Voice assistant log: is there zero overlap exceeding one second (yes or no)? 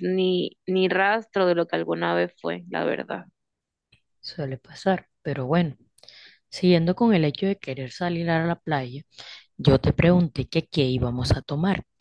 yes